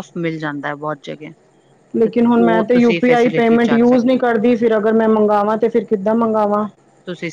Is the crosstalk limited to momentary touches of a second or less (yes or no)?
yes